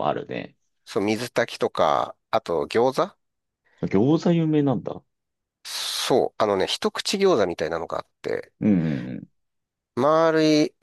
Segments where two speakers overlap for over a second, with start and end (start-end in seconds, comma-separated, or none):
none